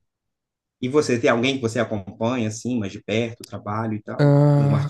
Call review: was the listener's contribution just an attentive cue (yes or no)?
no